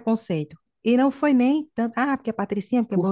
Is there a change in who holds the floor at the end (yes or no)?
no